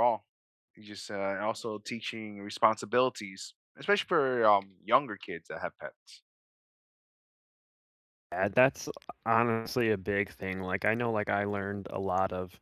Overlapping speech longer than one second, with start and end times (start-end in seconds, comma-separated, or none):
none